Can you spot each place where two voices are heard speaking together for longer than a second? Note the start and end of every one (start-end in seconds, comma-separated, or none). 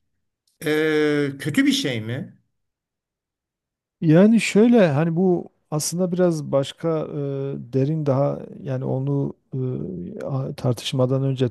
none